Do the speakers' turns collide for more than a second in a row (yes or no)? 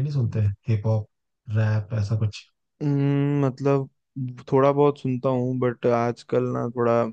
no